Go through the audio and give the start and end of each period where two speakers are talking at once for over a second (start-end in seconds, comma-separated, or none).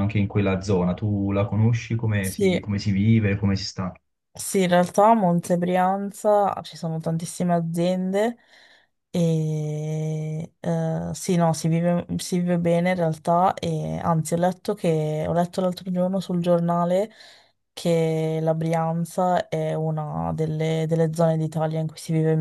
none